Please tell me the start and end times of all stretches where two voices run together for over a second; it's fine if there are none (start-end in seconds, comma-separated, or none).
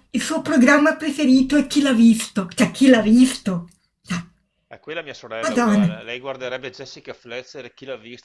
none